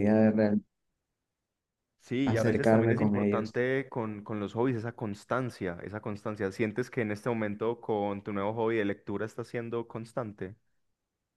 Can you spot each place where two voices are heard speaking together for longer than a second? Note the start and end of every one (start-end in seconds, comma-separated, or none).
2.2-3.6